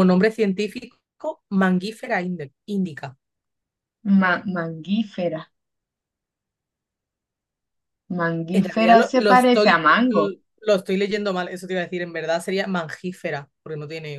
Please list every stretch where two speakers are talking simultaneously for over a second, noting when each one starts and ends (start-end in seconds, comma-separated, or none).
8.5-10.4